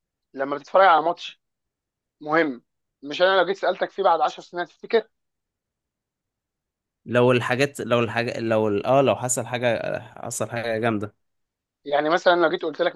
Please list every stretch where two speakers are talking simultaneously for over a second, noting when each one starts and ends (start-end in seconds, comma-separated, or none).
none